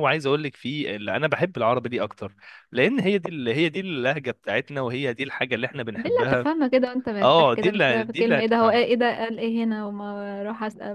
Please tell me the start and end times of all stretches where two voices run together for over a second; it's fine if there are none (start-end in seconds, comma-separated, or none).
7.2-8.8